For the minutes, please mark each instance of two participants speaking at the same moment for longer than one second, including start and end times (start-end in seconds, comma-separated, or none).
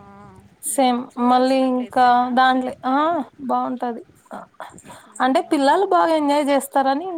0.7-2.9